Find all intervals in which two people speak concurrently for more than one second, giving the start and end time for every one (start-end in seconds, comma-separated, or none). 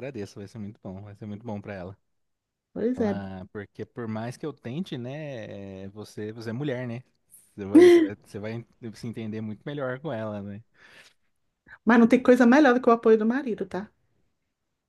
none